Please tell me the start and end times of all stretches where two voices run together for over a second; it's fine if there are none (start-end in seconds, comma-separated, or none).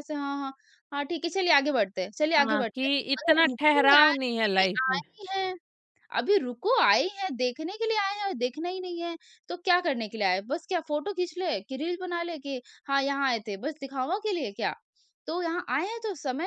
2.4-5.0